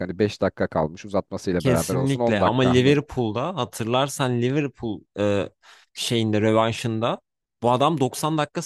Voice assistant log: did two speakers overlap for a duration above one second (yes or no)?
yes